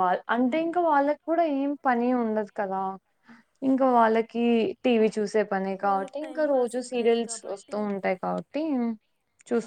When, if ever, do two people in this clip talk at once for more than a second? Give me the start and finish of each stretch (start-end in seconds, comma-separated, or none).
5.9-7.8